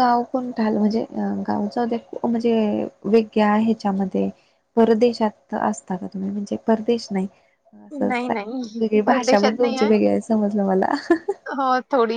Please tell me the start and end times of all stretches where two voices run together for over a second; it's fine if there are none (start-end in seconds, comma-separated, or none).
8.0-9.8